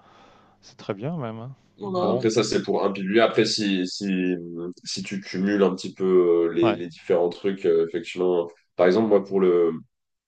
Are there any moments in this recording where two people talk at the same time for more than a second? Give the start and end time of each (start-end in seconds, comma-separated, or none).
none